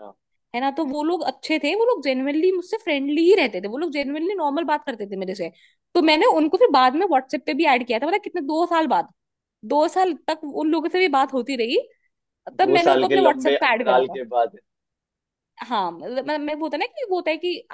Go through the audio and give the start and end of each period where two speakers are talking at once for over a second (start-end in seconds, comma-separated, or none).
12.6-14.2